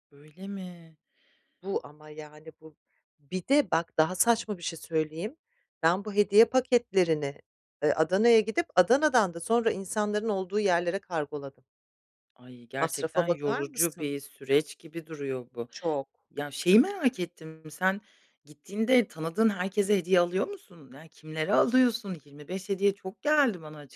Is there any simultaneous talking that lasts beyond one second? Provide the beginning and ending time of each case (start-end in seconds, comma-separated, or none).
12.8-14.1